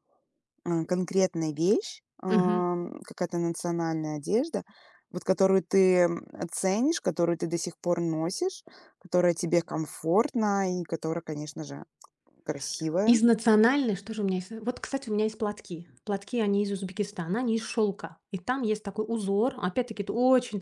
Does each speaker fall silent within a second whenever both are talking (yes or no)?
yes